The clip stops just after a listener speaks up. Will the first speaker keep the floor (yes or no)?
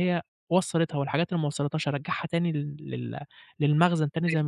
no